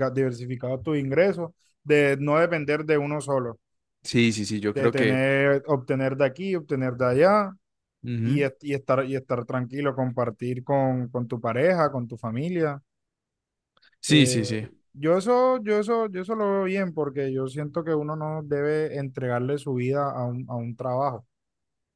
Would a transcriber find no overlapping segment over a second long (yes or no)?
yes